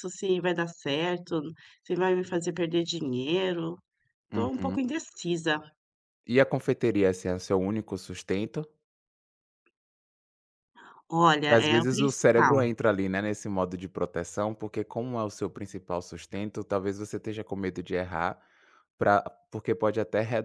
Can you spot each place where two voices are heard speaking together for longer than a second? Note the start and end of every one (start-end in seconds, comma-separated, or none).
11.4-12.7